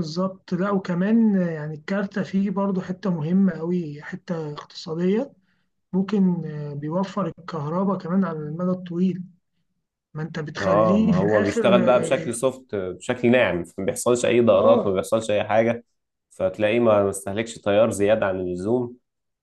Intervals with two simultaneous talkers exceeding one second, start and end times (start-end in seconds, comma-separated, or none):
10.6-12.4